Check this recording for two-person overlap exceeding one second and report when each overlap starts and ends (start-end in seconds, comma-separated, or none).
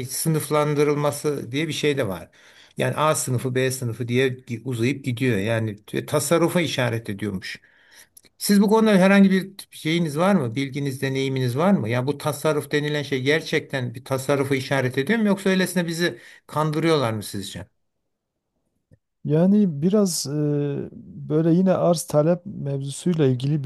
none